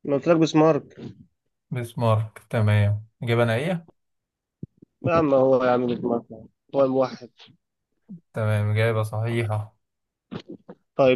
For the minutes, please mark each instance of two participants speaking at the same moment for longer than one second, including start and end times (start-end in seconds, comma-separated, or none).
none